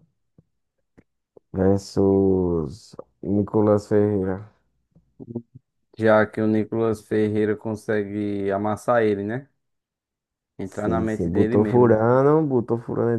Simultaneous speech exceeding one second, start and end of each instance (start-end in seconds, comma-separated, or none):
10.6-12.0